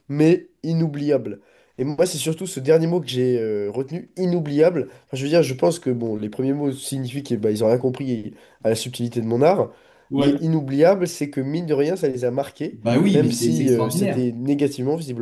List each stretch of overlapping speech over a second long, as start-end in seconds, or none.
12.7-14.3